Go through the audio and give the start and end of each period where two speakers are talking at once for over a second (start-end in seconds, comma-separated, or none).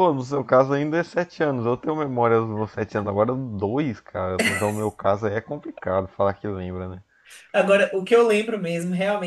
none